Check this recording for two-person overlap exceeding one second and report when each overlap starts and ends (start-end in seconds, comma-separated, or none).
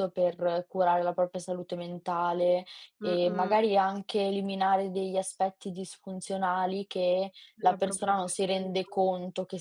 7.6-9.0